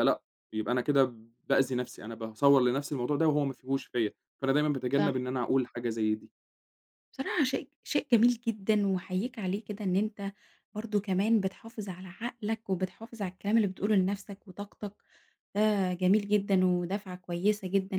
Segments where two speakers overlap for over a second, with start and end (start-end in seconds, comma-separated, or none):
none